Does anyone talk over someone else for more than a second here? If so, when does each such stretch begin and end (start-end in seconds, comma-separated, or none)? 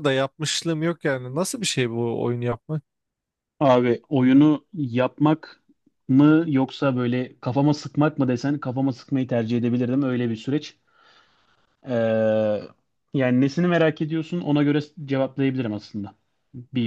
none